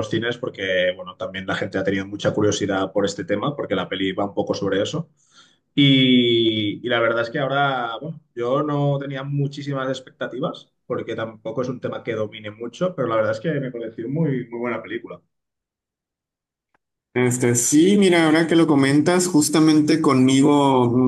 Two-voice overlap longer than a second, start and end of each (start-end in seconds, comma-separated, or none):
none